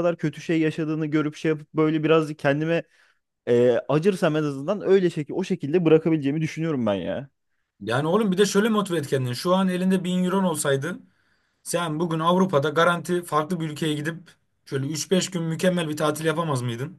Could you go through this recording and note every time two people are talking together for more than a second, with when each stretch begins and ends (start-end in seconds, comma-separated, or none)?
none